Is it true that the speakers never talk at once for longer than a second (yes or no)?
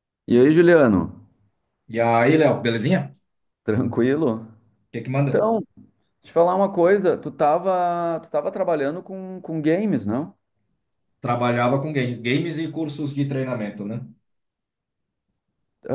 yes